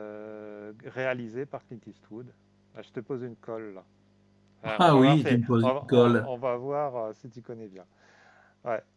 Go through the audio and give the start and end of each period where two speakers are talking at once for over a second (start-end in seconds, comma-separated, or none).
4.6-6.3